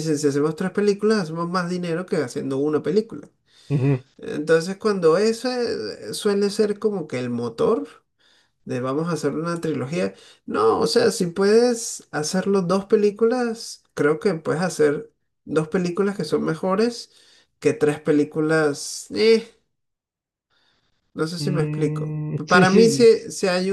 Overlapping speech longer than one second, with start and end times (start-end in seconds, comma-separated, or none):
21.4-22.8